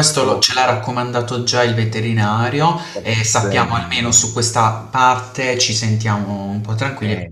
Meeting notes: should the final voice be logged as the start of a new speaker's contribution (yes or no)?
yes